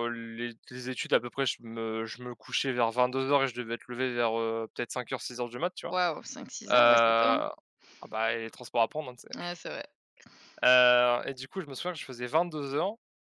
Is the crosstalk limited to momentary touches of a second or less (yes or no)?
yes